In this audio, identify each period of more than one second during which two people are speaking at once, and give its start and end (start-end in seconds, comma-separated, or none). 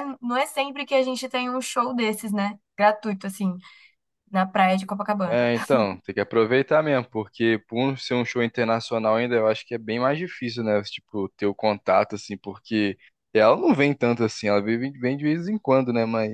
none